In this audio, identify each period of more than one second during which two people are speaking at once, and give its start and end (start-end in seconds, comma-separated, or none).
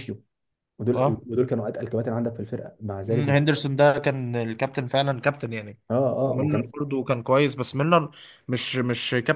none